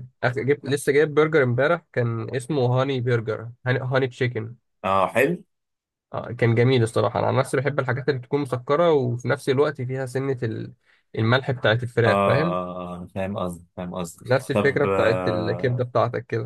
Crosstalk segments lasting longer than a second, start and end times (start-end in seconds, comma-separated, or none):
14.2-15.8